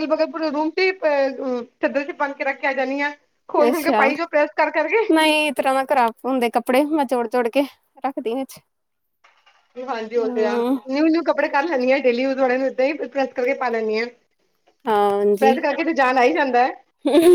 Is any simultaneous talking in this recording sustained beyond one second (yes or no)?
no